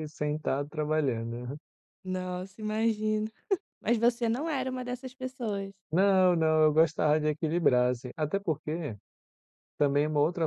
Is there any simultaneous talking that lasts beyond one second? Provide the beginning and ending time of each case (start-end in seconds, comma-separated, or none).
none